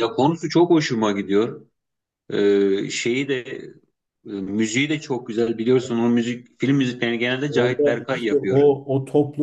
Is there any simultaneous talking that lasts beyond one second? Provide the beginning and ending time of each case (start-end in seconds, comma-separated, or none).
7.5-8.7